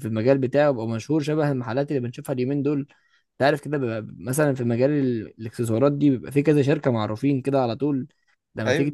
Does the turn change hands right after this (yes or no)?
no